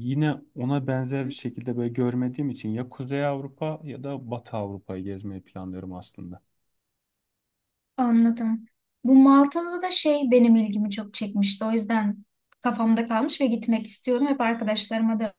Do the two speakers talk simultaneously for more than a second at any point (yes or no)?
no